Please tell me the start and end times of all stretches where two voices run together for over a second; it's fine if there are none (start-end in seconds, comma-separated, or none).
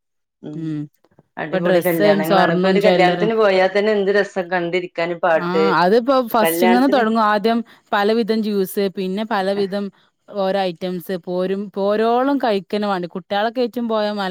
1.4-3.3